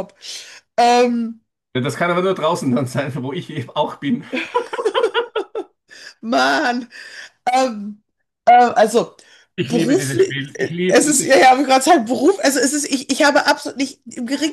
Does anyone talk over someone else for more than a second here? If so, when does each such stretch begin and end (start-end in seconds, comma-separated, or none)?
9.6-11.4